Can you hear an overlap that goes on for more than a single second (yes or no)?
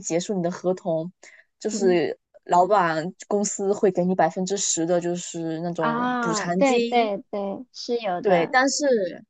yes